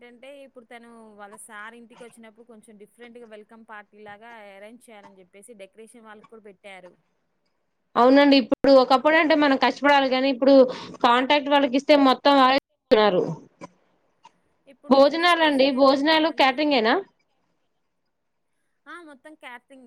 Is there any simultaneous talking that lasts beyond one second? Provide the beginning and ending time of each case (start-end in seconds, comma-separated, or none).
14.9-16.6